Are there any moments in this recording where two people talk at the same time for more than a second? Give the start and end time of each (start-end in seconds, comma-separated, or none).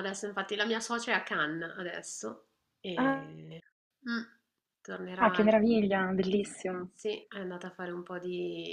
none